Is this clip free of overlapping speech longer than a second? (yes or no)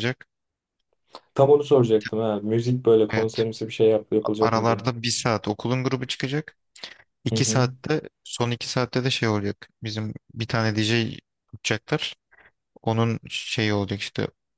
yes